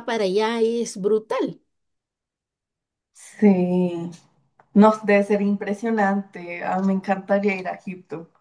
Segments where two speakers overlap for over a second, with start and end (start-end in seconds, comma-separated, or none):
none